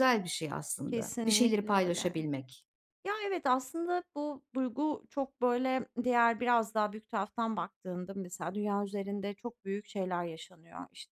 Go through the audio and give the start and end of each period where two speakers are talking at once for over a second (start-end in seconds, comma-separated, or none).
0.9-2.3